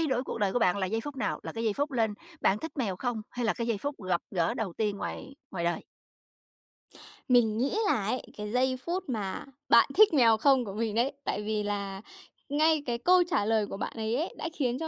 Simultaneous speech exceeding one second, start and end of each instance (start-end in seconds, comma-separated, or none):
none